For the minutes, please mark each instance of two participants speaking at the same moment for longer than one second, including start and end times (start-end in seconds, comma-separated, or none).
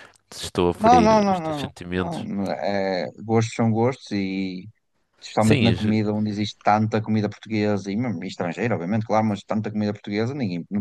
0.8-2.3